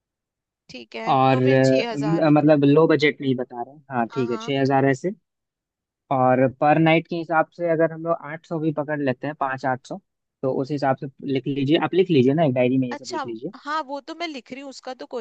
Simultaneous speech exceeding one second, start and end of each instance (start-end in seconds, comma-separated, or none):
none